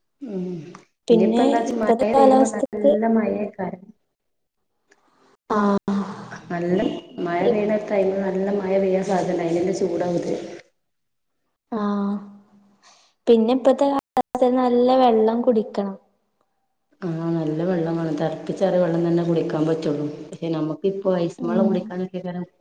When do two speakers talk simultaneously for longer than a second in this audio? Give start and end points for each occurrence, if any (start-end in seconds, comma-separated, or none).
1.1-2.9